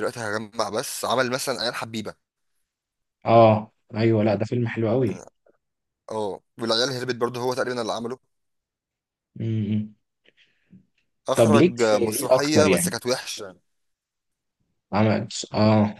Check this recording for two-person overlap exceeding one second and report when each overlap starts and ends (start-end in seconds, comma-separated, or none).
11.4-12.9